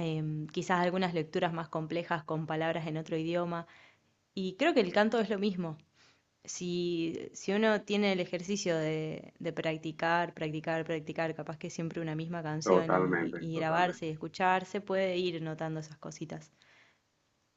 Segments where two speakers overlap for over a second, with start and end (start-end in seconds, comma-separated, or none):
12.6-14.1